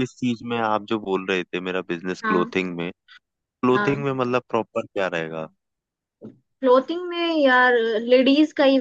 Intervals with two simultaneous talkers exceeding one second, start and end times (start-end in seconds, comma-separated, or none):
none